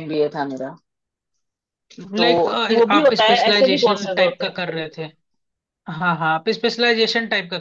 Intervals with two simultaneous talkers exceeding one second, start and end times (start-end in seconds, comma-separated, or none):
3.0-4.5